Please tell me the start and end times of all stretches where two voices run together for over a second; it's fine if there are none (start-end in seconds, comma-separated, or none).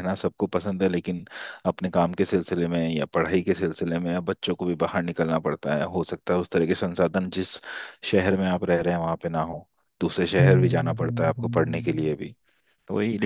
10.4-12.2